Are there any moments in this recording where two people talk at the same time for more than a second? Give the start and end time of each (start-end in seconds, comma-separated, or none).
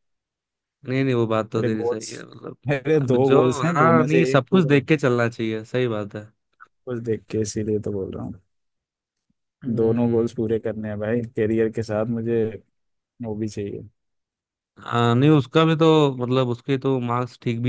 2.7-5.0